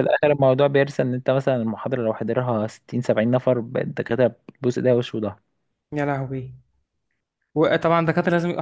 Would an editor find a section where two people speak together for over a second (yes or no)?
no